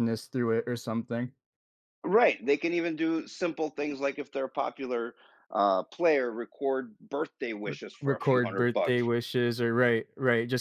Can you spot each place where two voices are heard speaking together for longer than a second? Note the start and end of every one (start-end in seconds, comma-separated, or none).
7.7-9.1